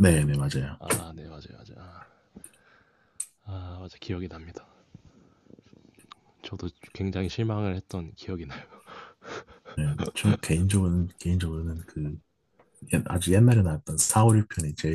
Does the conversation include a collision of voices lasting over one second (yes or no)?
no